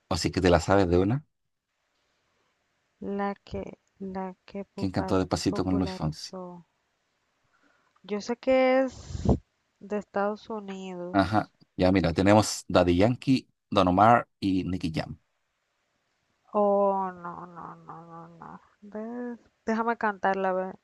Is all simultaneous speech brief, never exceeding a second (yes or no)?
no